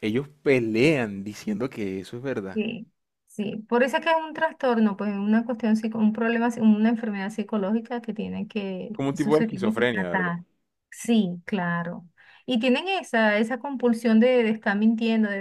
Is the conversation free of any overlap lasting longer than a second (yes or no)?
no